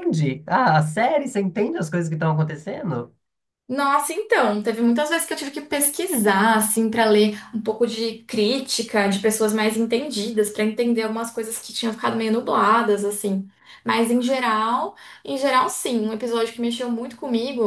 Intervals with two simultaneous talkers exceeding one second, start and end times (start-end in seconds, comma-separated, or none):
none